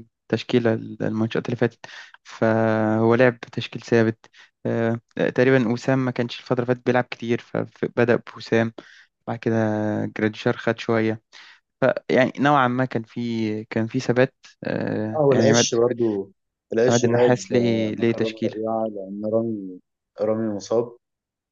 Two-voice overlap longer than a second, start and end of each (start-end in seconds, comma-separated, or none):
16.9-18.6